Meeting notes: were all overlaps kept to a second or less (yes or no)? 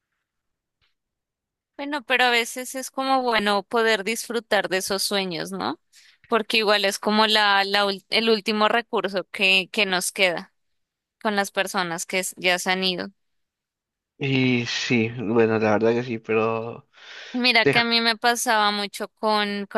yes